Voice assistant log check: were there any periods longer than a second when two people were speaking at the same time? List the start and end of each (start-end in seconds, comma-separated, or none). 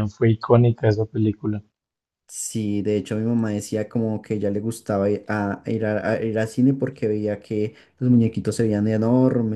none